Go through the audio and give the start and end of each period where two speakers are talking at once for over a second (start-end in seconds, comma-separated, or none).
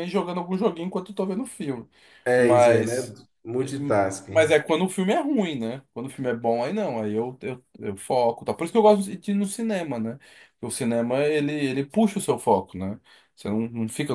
none